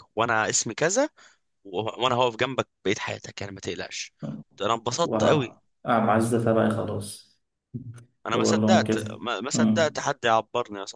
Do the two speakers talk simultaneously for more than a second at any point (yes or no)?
yes